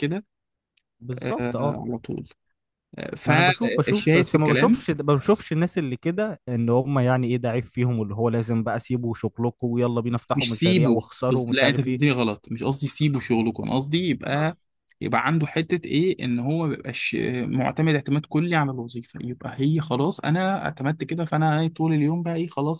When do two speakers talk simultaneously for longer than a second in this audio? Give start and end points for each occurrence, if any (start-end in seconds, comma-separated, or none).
3.2-4.8, 10.3-12.0